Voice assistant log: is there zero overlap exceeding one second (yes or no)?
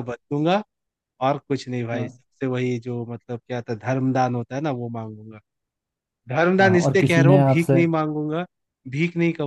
no